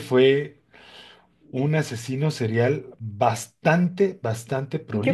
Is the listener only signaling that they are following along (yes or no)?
no